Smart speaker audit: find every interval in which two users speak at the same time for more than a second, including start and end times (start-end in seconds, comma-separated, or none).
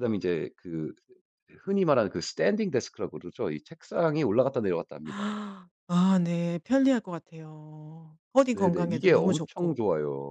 8.5-9.8